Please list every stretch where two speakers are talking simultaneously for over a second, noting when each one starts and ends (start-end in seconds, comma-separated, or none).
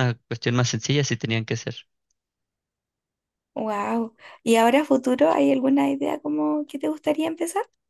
none